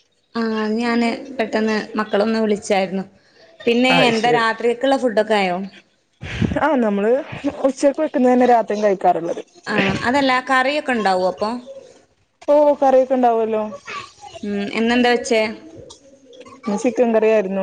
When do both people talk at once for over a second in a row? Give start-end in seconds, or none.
none